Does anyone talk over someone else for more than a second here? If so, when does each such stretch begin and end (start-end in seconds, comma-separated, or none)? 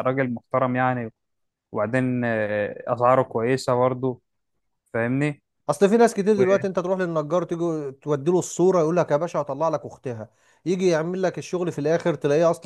none